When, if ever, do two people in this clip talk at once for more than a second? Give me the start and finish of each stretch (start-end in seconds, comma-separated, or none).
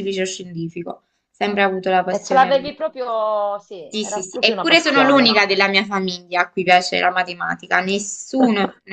3.9-5.3